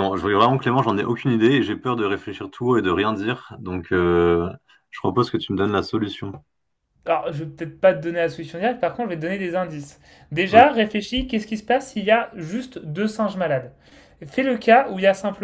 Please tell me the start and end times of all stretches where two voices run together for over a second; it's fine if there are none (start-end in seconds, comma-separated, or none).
none